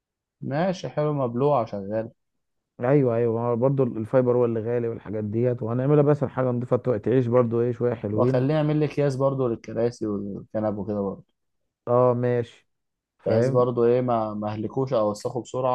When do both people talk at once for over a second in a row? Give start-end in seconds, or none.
none